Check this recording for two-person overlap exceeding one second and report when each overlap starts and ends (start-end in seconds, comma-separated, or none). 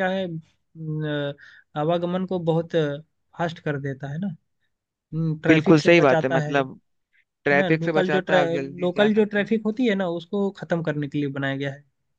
5.5-6.8, 7.6-9.5